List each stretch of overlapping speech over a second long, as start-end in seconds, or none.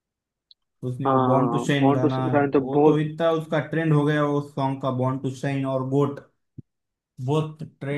1.1-3.0